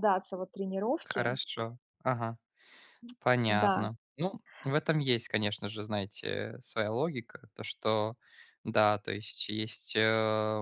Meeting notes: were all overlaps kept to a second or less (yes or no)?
yes